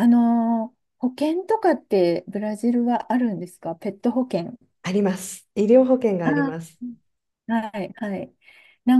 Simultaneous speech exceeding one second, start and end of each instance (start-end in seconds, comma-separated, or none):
none